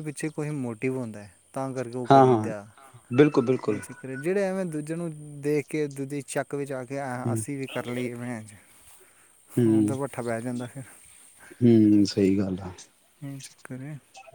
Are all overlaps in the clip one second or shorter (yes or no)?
yes